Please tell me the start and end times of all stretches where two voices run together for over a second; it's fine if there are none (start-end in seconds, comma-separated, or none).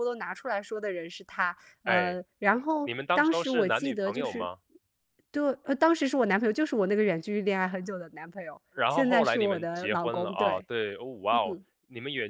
2.8-4.5, 8.7-10.7